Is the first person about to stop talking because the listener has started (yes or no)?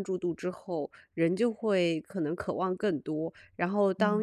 no